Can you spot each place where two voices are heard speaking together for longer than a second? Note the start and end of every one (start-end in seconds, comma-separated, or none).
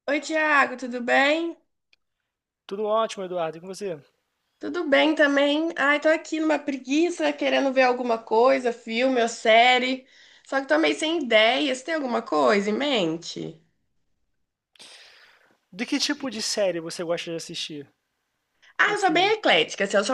none